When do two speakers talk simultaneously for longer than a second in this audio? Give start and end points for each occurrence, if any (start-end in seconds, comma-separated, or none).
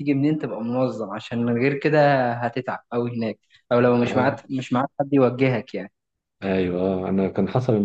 none